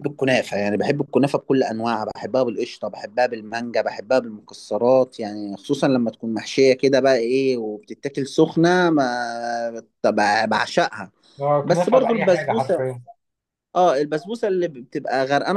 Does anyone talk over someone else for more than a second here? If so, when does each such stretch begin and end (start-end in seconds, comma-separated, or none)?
11.6-12.8